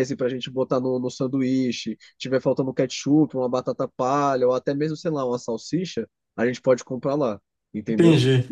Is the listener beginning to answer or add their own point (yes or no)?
yes